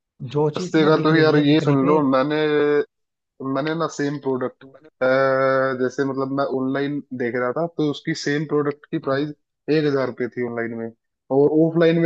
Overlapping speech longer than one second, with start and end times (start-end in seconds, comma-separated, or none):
0.6-2.0